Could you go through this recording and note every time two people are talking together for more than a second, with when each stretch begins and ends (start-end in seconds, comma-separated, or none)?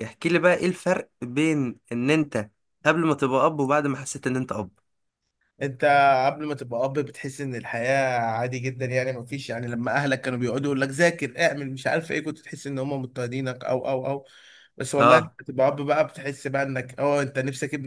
none